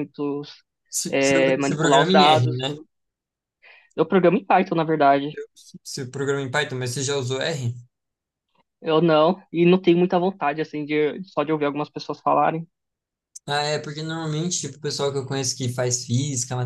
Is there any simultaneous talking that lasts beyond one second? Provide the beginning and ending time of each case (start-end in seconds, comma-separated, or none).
1.1-2.8